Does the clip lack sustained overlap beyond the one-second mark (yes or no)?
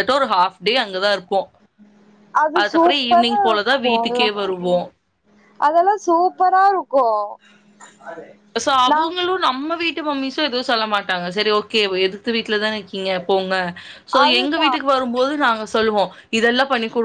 no